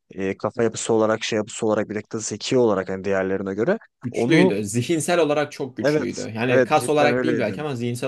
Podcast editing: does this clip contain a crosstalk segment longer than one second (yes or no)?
yes